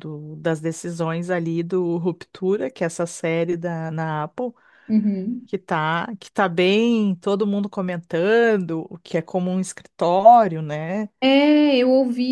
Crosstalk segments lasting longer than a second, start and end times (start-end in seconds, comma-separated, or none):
none